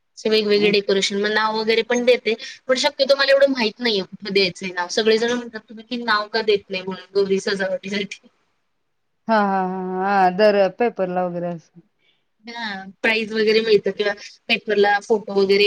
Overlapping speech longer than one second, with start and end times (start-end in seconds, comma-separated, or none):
none